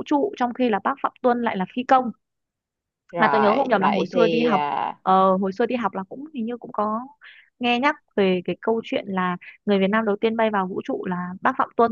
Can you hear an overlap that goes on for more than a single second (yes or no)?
yes